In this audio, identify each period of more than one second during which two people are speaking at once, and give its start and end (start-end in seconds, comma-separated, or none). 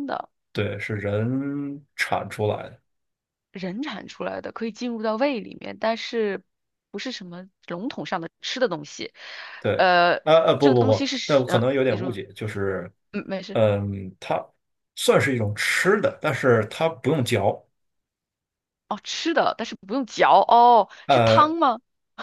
10.6-12.2